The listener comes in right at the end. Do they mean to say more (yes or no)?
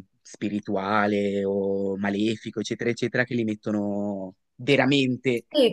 yes